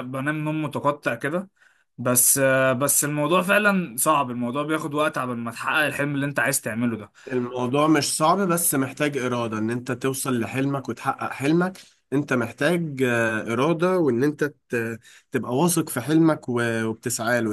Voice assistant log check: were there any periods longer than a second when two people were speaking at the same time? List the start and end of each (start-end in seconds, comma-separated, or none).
none